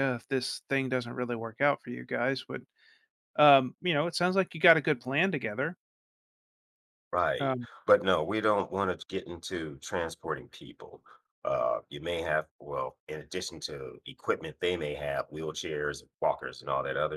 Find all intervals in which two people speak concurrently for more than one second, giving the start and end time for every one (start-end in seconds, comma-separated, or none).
none